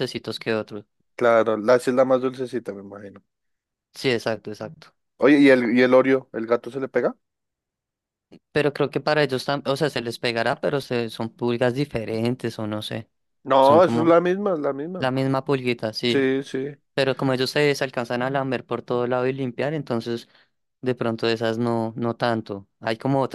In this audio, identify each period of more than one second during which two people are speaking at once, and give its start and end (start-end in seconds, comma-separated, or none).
none